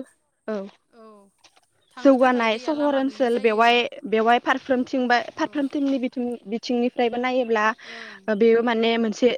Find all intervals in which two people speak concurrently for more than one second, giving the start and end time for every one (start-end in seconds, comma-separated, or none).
2.0-3.7